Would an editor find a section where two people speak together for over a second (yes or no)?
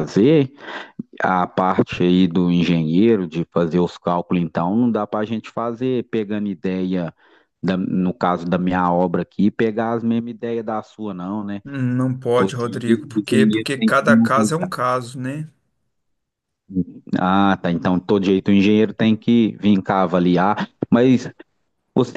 yes